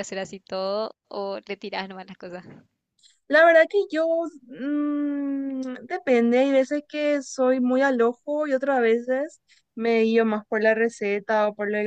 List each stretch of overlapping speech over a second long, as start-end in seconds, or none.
none